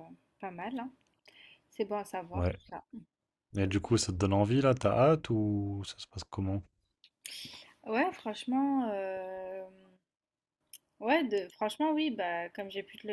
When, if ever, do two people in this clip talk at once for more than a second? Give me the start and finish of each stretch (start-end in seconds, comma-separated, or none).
none